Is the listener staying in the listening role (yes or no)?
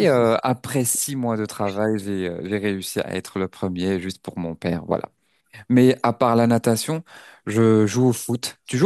no